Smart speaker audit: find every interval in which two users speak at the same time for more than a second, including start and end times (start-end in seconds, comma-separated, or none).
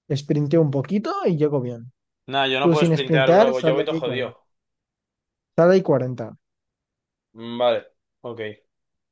2.6-4.3